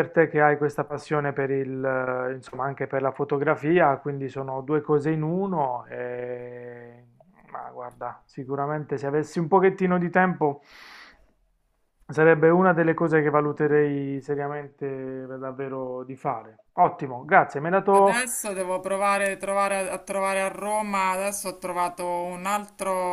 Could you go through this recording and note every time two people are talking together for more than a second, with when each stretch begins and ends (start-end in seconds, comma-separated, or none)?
none